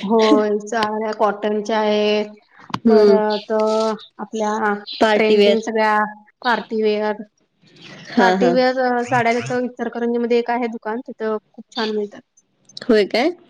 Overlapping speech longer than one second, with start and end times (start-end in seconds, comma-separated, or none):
none